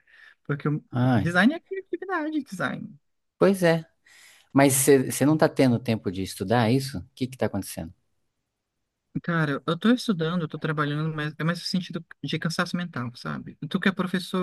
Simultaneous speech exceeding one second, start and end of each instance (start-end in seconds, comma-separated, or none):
none